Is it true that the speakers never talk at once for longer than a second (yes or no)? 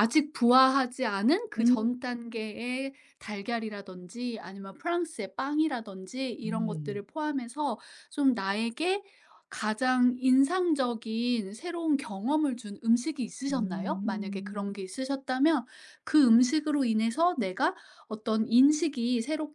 no